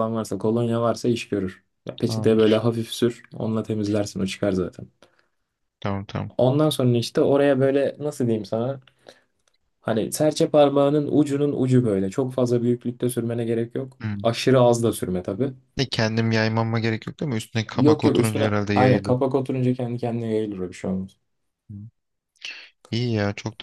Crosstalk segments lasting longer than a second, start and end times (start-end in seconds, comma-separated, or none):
17.7-19.2